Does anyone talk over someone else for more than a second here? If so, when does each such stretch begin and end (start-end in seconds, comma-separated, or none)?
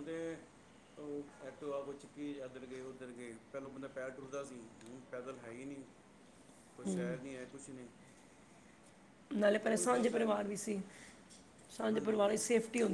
none